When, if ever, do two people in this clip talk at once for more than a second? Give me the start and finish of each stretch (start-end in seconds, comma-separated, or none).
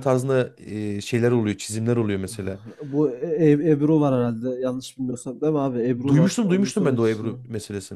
6.1-7.4